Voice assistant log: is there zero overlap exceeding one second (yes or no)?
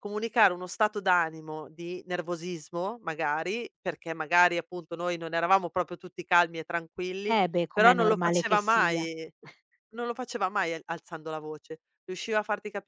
no